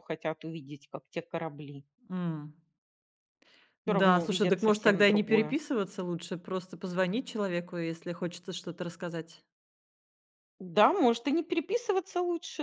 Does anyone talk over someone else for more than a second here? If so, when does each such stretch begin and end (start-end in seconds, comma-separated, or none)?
3.9-5.6